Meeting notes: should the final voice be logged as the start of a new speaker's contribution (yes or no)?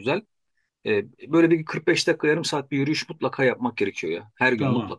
yes